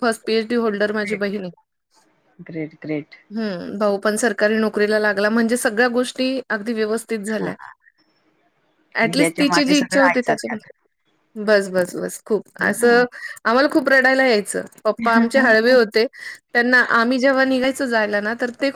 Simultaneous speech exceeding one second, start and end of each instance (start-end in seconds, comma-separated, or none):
9.2-10.7